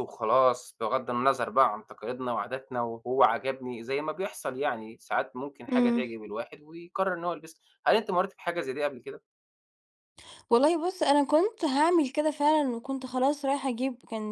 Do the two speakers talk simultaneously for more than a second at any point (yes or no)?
no